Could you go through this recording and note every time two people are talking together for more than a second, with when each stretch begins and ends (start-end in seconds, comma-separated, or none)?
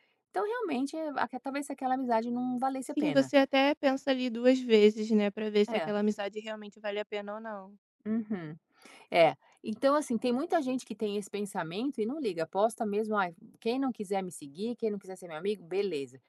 none